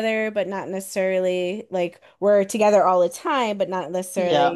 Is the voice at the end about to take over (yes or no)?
no